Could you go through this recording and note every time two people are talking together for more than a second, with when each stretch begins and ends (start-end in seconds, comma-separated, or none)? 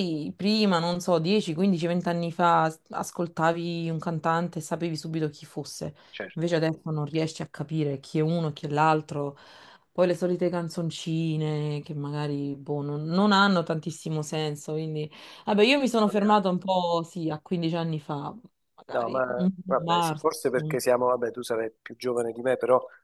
18.9-20.8